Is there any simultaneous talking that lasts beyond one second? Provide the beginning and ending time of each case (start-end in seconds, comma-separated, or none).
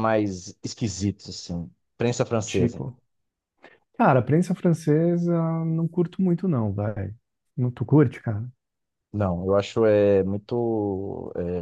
none